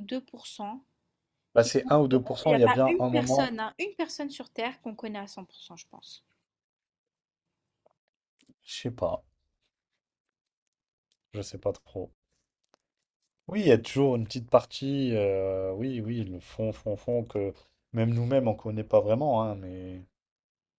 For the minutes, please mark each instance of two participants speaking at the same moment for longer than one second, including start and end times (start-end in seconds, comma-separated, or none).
1.6-3.5